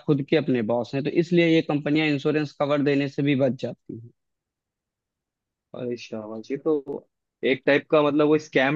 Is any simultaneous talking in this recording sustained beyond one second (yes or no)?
no